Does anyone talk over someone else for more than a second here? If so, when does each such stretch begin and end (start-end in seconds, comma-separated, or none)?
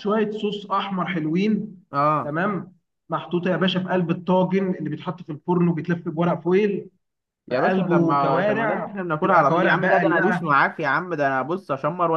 7.5-10.5